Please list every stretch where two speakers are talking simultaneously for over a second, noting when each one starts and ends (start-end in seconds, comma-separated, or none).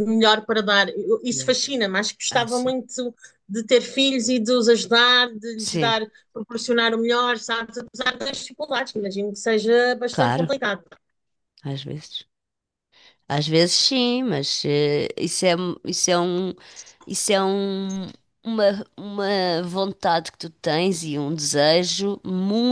none